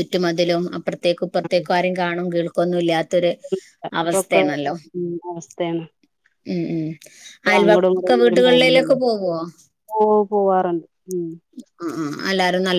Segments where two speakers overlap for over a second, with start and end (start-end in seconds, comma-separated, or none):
7.5-9.0